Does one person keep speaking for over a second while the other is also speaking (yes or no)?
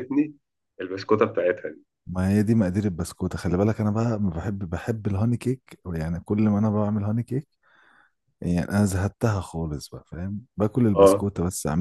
no